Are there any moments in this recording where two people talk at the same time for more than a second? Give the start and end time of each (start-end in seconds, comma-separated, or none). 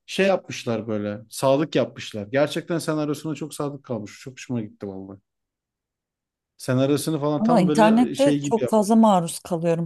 7.4-8.7